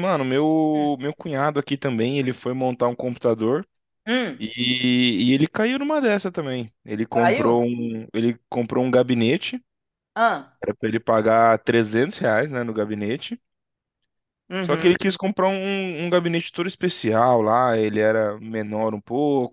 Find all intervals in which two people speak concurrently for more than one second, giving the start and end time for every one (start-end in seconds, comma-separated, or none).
none